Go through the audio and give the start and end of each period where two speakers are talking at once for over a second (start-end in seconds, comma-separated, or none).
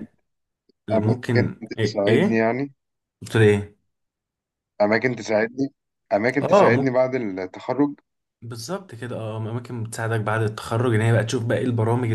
0.9-2.5